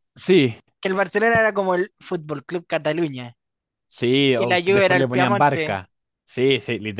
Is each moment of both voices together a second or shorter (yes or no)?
no